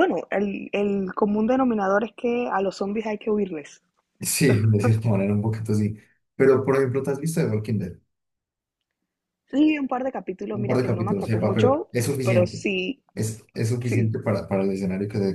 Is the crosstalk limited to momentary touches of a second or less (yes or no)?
no